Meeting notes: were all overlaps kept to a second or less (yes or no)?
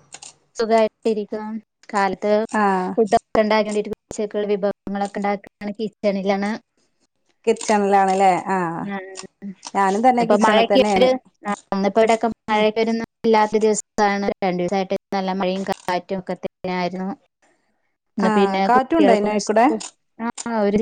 no